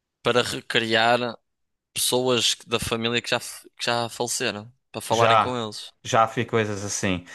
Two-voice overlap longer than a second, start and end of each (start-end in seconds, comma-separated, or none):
none